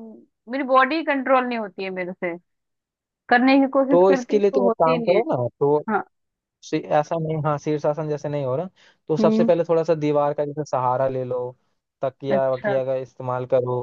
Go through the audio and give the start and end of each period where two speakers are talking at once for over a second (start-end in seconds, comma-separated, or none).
3.9-5.2